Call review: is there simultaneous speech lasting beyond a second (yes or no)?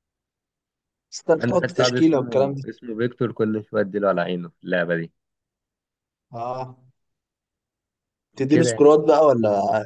yes